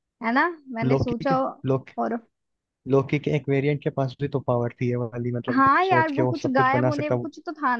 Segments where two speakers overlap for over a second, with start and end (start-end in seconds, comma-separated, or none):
5.5-7.3